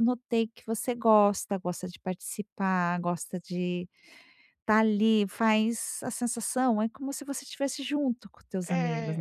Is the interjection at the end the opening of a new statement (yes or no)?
yes